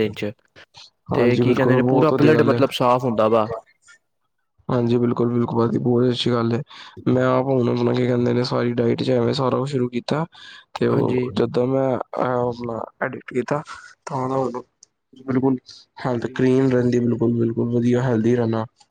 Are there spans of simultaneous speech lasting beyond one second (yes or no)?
yes